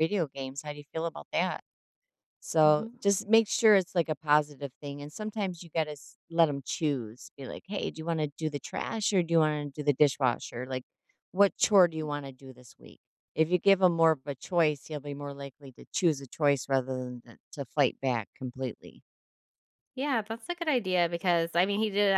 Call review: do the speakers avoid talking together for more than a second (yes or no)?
yes